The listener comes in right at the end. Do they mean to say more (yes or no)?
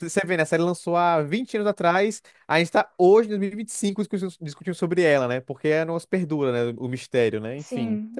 yes